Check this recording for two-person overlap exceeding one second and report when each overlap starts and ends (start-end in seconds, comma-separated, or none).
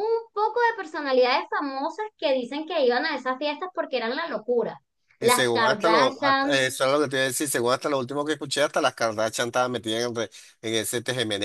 5.2-6.6